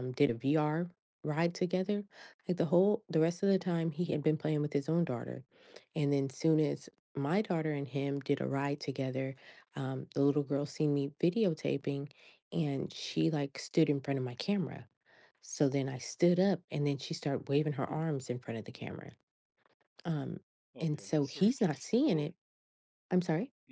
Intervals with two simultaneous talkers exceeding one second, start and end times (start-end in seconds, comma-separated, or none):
20.8-22.3